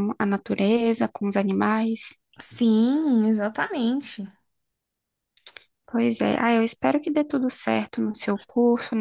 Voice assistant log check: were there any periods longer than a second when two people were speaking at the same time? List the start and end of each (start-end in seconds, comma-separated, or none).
none